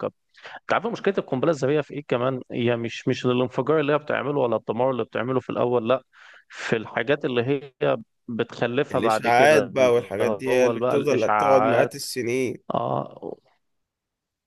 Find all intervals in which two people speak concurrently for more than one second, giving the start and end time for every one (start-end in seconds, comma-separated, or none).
8.9-11.9